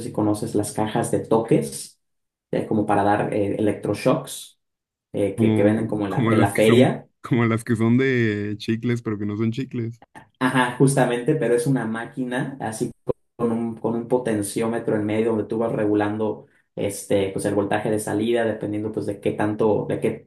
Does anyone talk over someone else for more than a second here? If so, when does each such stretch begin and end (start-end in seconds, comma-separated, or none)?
5.3-7.1